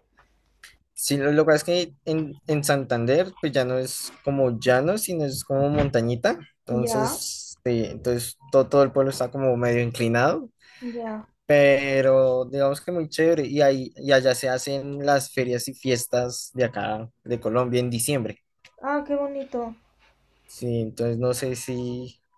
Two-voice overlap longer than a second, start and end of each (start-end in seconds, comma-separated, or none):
none